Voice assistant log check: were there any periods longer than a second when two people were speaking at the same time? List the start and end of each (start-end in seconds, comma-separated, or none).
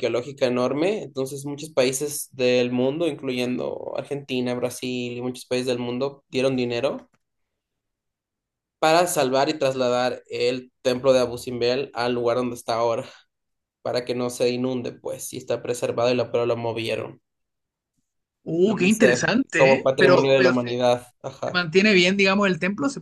18.7-20.7